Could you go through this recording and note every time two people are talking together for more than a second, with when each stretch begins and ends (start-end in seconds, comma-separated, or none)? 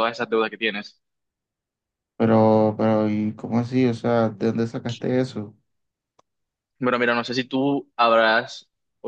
none